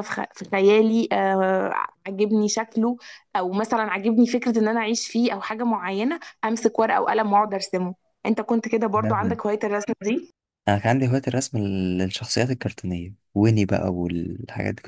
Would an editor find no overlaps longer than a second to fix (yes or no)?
yes